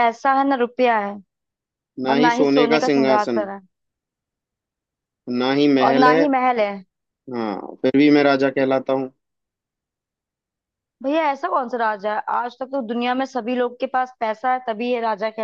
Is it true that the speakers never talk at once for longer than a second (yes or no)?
no